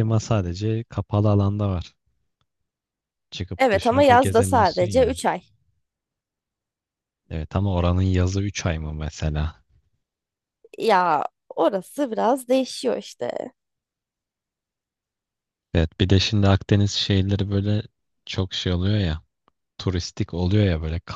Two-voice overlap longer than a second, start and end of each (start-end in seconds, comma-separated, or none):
3.6-5.2